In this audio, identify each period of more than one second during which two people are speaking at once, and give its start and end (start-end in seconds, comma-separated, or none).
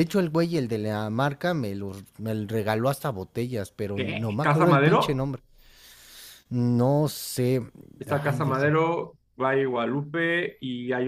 3.9-5.2